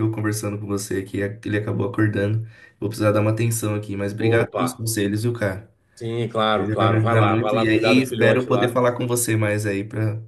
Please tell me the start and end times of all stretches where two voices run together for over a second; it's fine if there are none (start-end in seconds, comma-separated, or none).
6.5-8.8